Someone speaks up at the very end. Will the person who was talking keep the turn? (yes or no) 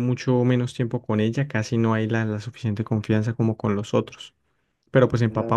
yes